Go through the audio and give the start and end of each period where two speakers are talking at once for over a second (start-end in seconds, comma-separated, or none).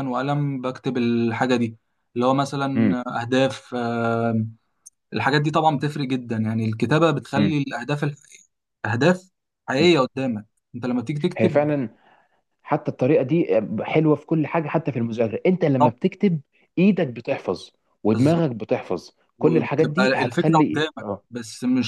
19.4-21.2